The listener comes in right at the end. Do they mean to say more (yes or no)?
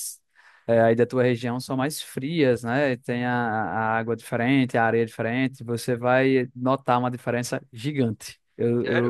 yes